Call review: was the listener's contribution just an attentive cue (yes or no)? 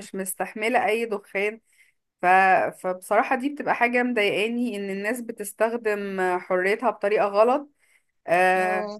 yes